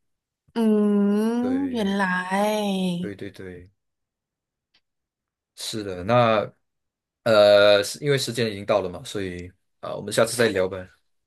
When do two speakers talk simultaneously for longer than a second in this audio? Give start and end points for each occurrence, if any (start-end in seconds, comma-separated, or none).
none